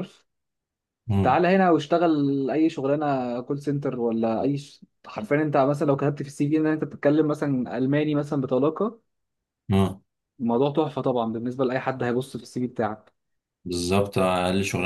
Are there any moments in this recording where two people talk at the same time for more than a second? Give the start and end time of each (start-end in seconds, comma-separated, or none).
none